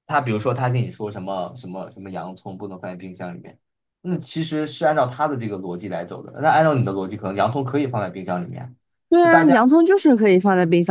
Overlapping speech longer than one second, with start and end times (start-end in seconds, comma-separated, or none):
none